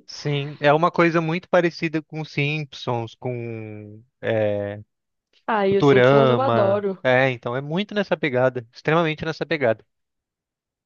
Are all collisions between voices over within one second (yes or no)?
no